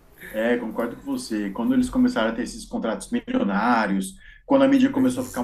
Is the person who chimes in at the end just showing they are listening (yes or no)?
yes